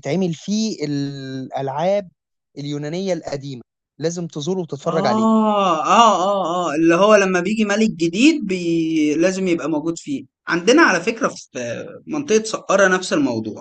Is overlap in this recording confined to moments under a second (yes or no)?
yes